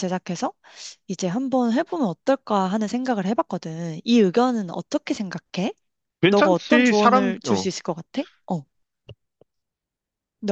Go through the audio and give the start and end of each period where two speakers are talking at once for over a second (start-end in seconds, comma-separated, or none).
6.3-7.7